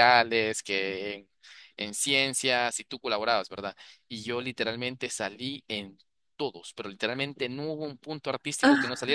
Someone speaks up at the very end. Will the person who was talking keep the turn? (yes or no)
yes